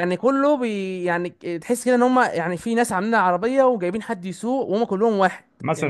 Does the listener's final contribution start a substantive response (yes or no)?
yes